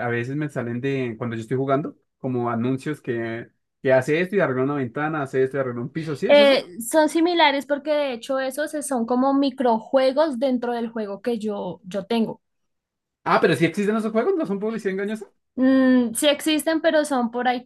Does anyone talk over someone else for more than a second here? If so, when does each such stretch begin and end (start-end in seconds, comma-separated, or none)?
none